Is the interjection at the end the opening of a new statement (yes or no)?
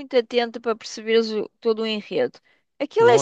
no